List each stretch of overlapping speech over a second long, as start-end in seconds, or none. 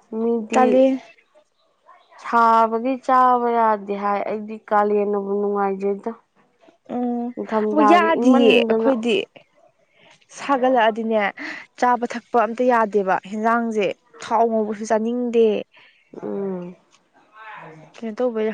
7.3-8.9